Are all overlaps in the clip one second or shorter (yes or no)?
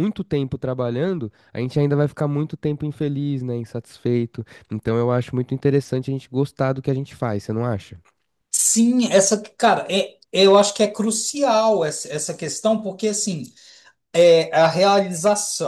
yes